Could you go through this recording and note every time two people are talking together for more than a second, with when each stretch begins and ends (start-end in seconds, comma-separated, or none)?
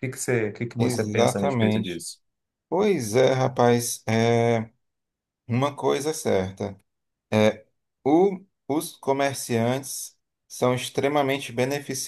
0.8-2.0